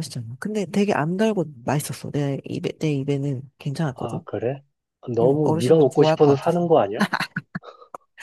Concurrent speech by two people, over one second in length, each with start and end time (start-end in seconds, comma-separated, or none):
5.2-6.6